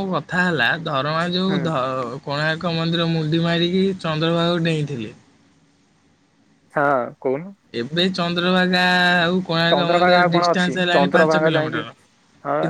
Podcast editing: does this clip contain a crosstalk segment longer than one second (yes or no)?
yes